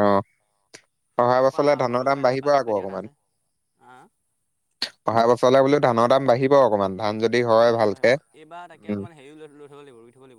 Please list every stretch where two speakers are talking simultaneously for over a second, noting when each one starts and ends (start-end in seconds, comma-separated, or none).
1.4-3.1